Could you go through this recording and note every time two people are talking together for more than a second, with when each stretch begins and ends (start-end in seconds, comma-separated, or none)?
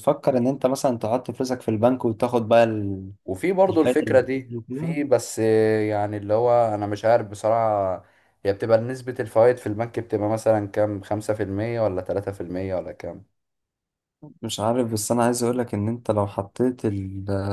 3.7-5.0